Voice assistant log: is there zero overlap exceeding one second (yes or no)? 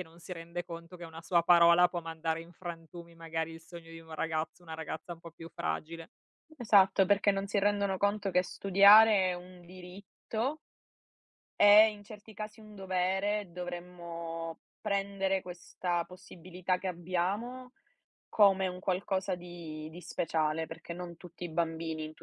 yes